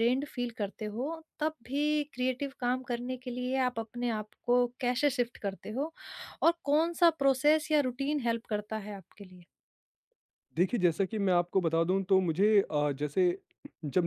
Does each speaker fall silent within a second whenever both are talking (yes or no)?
yes